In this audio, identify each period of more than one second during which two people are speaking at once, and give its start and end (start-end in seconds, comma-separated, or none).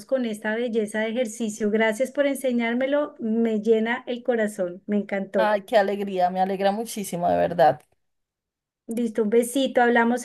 none